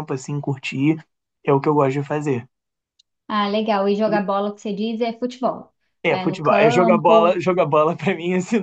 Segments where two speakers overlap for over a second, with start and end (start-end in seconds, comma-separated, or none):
6.1-7.4